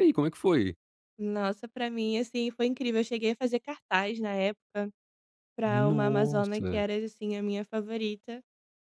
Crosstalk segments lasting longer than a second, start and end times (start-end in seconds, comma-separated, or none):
5.6-6.8